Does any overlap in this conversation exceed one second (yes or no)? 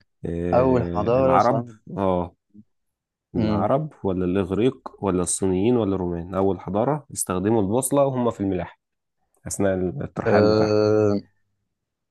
yes